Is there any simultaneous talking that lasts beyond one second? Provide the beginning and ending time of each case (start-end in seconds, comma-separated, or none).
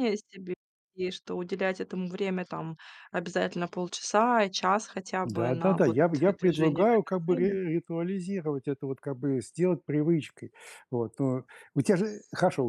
5.2-7.6